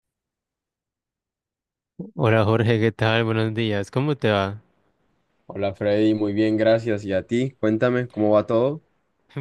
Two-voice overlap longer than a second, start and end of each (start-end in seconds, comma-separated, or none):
none